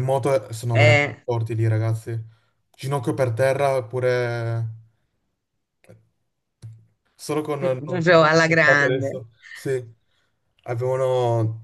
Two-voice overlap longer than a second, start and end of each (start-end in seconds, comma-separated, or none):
7.6-9.2